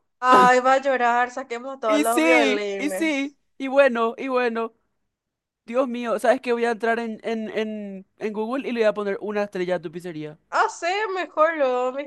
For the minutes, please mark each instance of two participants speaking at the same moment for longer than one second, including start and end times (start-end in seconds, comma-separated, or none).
1.9-3.4